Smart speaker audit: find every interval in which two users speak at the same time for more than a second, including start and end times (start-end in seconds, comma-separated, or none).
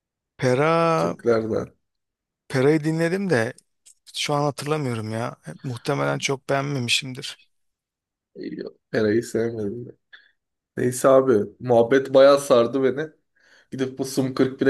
none